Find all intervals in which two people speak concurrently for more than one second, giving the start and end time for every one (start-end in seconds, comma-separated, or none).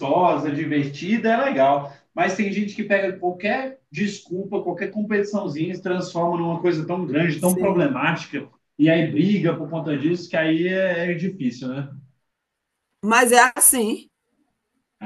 none